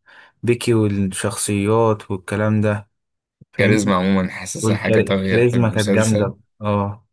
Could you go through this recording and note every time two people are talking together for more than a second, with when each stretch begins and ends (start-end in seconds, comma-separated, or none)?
4.6-6.3